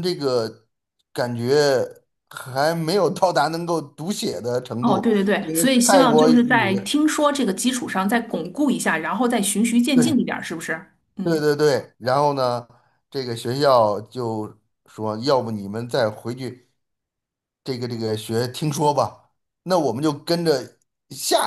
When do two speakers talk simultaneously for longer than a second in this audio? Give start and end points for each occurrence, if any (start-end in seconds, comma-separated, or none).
4.8-6.7